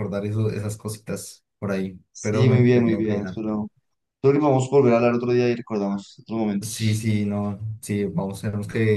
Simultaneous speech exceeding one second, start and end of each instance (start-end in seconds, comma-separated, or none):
2.1-3.4